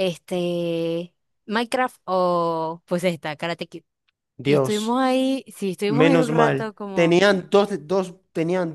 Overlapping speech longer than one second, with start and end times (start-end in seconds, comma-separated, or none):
5.8-7.2